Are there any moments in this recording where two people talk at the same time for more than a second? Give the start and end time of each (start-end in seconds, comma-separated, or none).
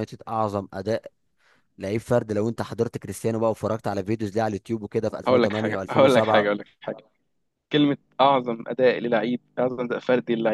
5.3-6.5